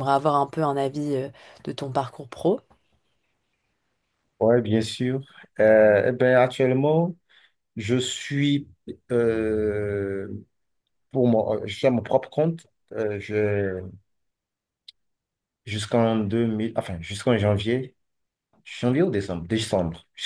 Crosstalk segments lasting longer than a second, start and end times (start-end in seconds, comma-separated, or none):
none